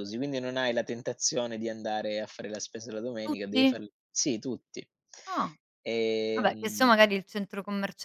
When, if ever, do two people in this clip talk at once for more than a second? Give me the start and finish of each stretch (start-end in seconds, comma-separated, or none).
none